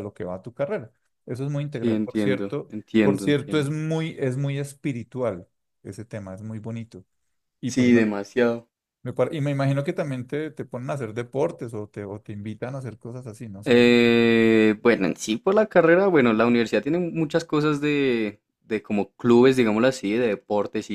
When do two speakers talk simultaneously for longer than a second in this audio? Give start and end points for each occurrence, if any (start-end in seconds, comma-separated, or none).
1.7-3.8